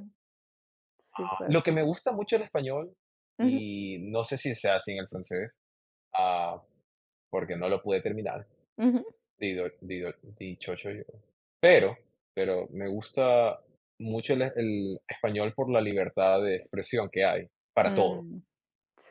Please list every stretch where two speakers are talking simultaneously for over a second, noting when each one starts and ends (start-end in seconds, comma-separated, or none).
none